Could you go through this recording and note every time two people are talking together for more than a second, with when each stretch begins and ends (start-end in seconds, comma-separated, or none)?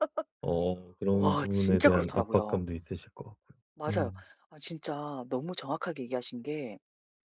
1.1-2.6